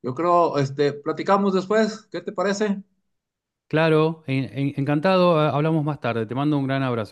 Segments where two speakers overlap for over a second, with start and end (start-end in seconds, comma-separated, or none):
none